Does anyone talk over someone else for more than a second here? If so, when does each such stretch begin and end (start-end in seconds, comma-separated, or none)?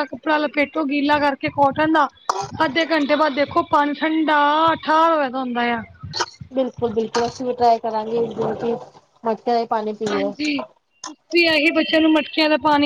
none